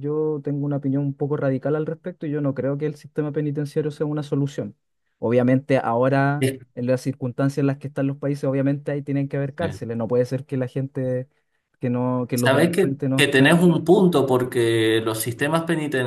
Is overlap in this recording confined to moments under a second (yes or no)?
no